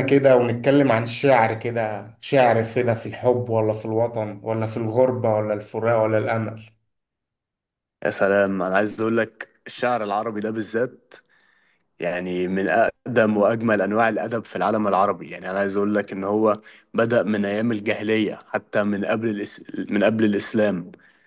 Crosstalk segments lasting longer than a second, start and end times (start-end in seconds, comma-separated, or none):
none